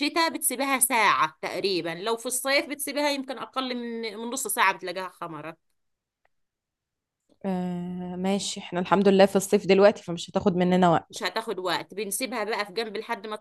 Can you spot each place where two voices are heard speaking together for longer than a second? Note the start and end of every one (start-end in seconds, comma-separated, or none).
none